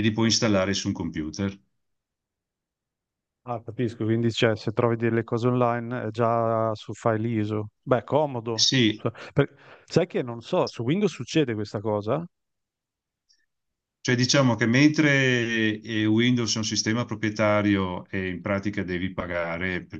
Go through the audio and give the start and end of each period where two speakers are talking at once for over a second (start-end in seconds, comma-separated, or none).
none